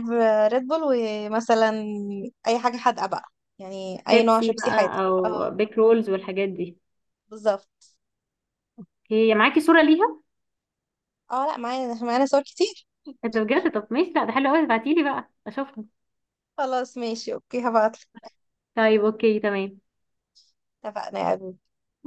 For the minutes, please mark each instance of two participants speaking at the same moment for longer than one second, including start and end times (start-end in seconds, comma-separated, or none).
4.1-5.6